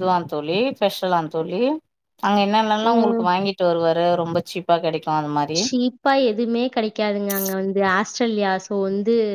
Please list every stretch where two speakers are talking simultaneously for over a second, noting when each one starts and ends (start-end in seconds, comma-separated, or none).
none